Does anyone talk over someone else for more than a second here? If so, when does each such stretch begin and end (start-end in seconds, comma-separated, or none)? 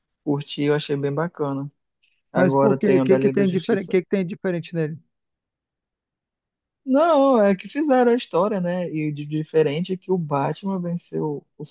2.3-4.0